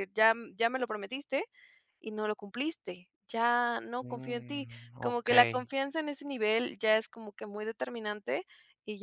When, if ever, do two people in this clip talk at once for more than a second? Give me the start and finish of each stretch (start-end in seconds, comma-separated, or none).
4.0-5.5